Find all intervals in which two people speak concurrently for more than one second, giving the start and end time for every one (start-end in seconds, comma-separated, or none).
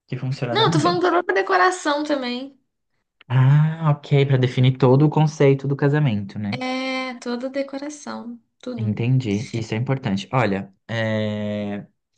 none